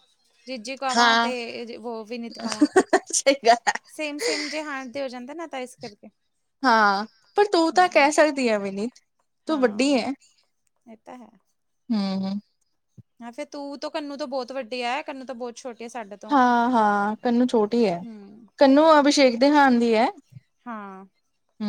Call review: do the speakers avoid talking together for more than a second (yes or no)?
yes